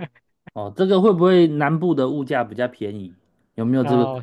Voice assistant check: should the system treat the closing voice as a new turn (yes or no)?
yes